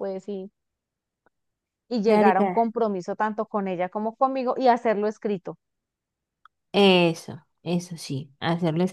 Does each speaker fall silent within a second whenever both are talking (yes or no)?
yes